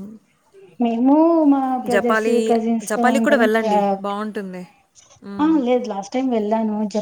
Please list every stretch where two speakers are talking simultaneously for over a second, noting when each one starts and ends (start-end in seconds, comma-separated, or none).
none